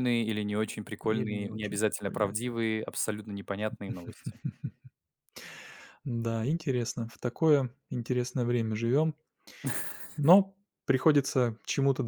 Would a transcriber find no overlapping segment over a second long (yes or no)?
no